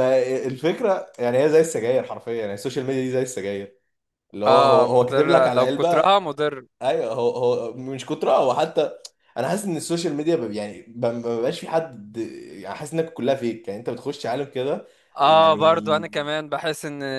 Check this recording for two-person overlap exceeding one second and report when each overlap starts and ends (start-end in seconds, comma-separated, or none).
4.5-6.1